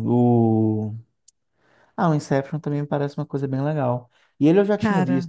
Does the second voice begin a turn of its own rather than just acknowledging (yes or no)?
no